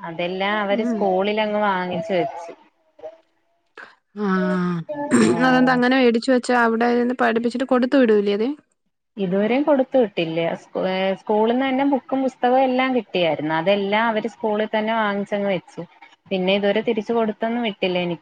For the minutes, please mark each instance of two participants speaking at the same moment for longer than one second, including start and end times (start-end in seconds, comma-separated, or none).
none